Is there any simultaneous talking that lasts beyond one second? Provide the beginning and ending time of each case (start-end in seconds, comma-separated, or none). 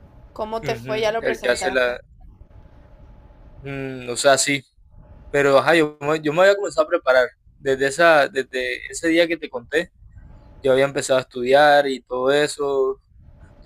0.6-1.9